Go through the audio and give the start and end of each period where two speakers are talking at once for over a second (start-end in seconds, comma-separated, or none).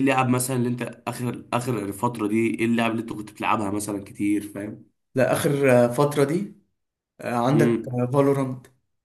none